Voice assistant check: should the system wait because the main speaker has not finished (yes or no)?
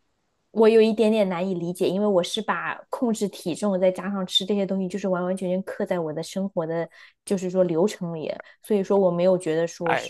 no